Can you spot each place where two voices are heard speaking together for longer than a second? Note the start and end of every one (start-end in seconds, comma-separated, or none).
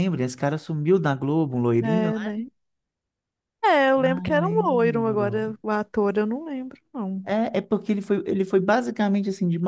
4.0-5.5